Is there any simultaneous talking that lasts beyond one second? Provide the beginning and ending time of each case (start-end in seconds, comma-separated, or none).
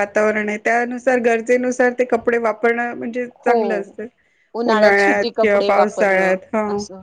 5.0-6.4